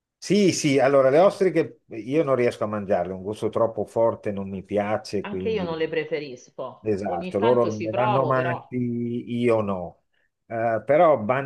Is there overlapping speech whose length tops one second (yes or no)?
yes